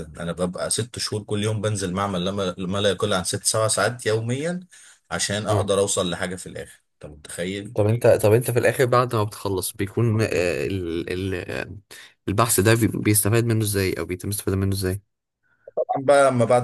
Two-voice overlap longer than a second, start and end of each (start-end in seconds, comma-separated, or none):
none